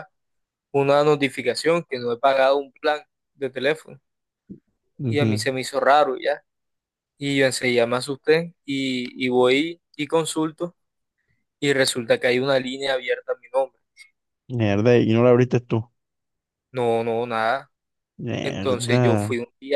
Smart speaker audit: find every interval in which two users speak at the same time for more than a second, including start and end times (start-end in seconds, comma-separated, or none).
none